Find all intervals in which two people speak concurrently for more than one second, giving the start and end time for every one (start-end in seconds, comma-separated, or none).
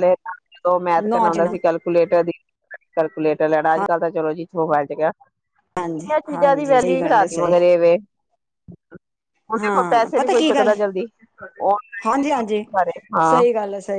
6.1-7.6